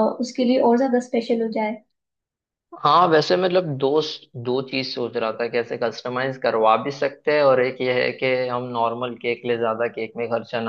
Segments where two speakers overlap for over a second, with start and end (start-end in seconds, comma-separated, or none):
none